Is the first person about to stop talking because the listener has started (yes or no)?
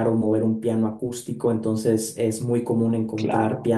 no